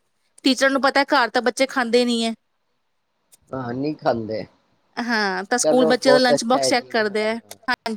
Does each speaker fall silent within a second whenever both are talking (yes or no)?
no